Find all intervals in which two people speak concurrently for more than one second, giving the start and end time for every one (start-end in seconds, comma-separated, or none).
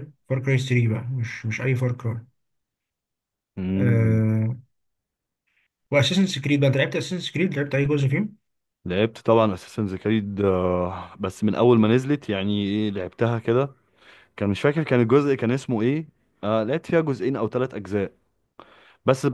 none